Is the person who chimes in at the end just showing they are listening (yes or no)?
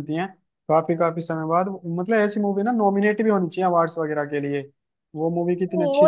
no